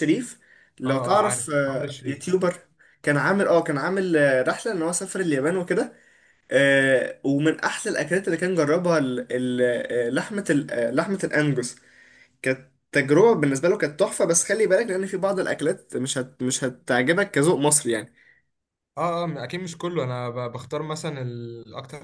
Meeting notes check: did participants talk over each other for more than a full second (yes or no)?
yes